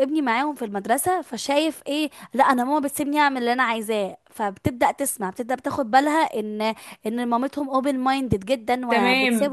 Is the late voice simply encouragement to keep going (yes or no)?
no